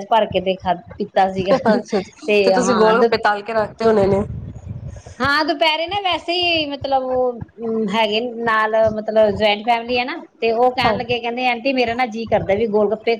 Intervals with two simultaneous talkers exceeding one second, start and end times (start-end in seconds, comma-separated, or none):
none